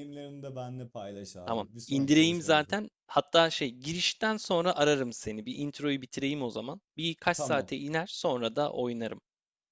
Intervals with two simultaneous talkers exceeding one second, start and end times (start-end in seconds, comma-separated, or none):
1.4-2.8